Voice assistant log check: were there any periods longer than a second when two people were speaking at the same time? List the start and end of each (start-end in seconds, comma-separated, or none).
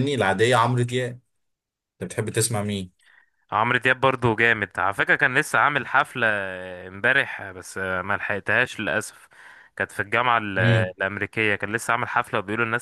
none